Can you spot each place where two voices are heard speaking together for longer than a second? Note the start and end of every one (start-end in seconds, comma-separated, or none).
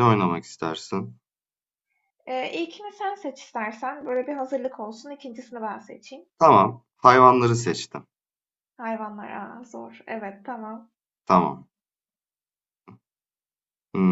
none